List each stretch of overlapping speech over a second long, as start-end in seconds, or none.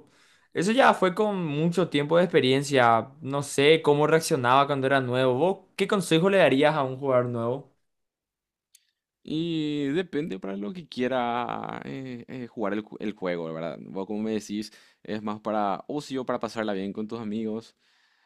none